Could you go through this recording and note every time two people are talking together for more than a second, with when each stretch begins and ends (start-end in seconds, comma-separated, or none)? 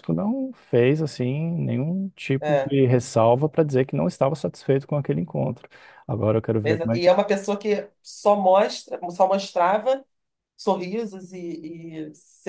none